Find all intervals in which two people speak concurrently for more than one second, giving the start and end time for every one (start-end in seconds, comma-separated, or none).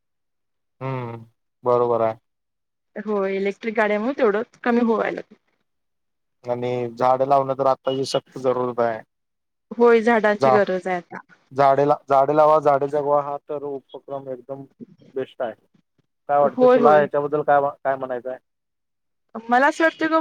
none